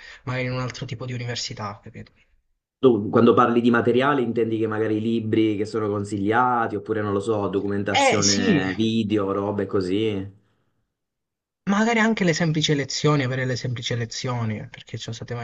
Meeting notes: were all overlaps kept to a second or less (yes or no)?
yes